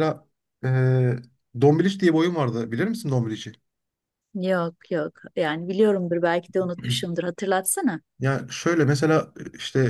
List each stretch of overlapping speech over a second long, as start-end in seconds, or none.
none